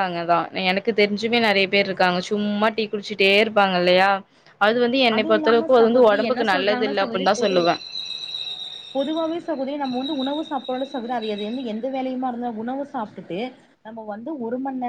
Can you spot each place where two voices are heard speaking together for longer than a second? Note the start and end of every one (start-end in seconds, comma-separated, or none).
5.2-7.6